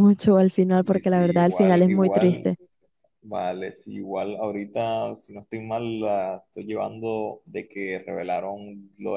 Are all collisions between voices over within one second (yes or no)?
no